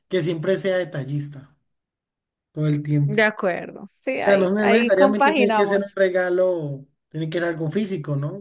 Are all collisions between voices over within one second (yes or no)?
no